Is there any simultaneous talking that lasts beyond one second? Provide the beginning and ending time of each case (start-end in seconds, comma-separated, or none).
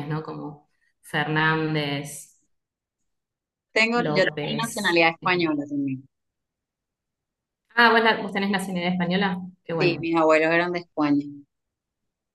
3.9-5.6